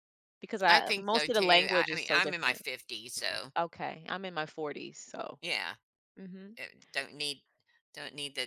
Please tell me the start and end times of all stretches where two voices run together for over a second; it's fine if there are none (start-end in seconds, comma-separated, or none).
0.7-2.6